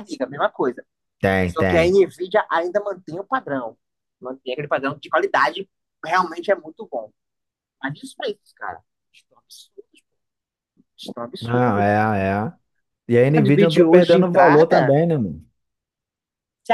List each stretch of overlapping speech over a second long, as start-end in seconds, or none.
13.4-15.0